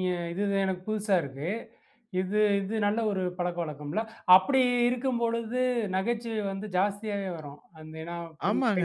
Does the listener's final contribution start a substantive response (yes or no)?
yes